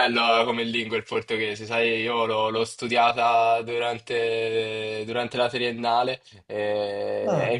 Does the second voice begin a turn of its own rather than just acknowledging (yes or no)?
no